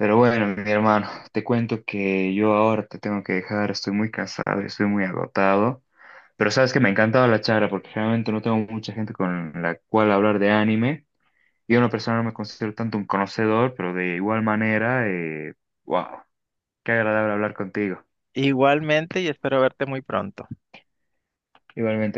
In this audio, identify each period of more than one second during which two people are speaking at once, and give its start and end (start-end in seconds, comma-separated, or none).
none